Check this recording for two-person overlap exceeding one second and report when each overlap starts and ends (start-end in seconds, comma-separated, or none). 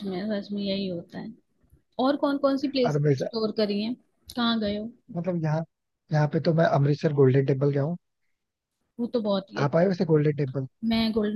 none